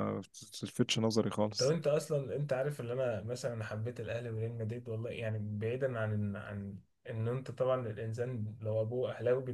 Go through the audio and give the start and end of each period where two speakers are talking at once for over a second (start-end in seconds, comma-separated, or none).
none